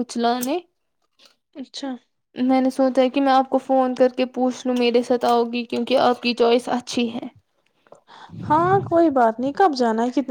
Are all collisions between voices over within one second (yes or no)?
yes